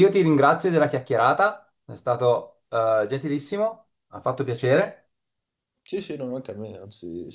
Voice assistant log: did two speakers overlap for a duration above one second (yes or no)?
no